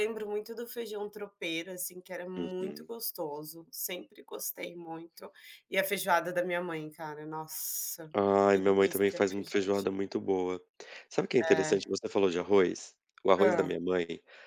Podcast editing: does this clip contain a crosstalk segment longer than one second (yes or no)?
yes